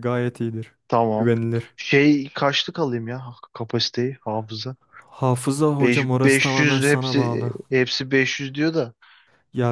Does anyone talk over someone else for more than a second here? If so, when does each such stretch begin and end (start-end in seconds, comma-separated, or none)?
5.8-7.5